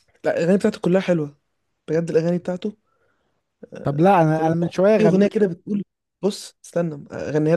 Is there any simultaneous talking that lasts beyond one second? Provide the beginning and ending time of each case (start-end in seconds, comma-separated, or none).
3.8-5.4